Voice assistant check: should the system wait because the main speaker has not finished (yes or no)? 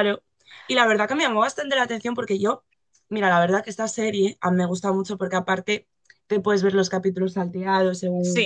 no